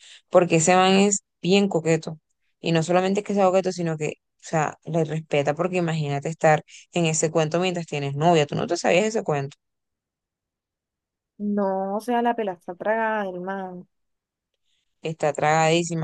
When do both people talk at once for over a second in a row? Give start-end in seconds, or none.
none